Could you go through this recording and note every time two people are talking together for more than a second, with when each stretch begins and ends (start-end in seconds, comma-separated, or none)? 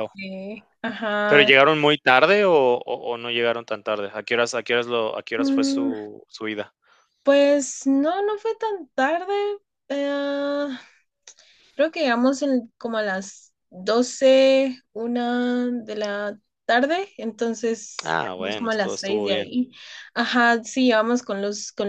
18.0-19.5